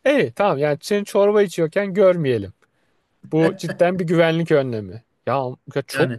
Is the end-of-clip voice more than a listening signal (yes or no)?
no